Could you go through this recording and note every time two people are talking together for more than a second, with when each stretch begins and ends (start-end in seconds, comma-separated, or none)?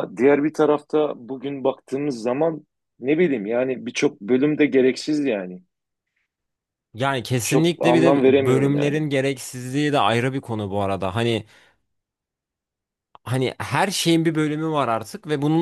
7.4-8.9